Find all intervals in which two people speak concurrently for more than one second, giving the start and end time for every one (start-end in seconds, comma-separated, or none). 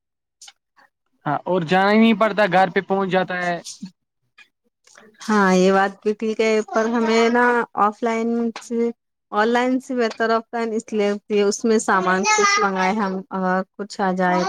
none